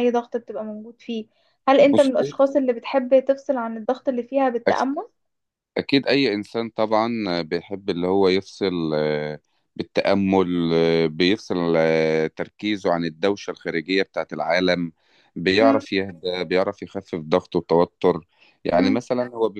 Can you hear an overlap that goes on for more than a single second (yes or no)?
no